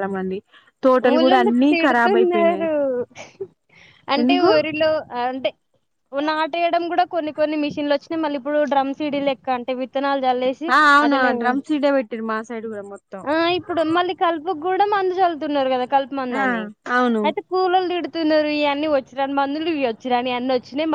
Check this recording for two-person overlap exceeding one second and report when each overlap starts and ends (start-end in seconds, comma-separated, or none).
1.1-2.7